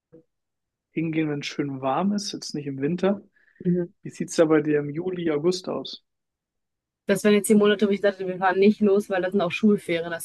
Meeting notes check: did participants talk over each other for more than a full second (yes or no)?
no